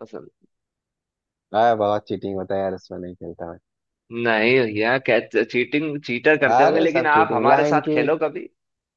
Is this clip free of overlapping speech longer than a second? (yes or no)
no